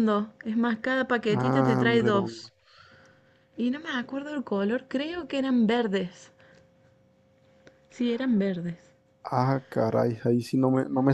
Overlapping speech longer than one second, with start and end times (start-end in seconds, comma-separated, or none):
1.3-2.5